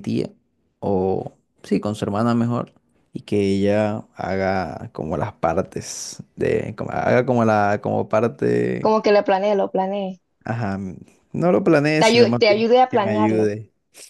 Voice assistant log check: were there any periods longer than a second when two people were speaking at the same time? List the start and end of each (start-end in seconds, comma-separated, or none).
12.0-13.5